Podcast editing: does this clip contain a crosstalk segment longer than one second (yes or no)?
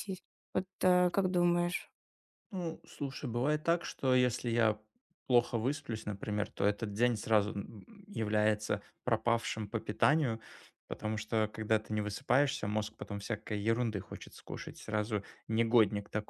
no